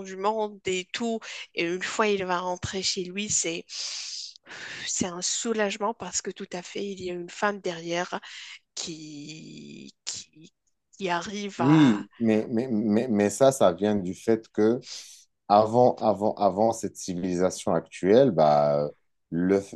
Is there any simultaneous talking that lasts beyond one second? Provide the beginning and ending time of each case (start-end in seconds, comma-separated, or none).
none